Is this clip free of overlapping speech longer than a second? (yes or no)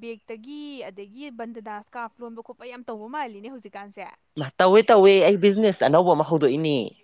yes